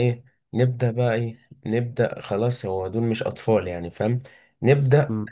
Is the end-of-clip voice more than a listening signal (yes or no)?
no